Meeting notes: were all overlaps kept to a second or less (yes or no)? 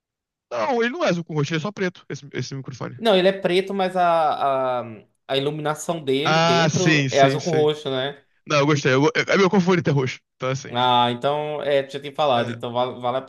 no